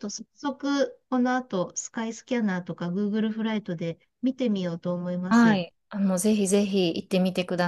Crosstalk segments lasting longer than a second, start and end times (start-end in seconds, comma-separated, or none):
none